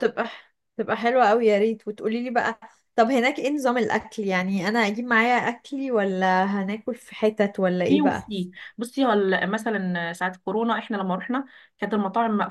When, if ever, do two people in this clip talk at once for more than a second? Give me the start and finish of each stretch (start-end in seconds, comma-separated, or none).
none